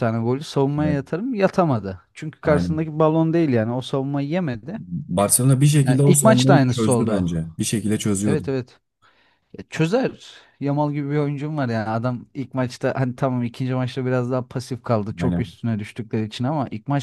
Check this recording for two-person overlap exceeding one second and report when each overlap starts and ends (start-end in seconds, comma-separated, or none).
5.8-7.3